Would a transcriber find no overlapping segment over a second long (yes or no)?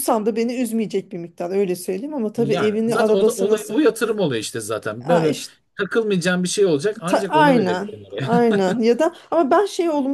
no